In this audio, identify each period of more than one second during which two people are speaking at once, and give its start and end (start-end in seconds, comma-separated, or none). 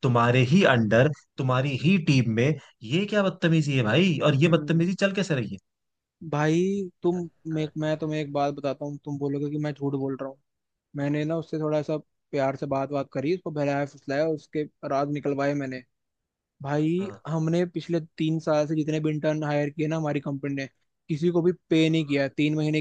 none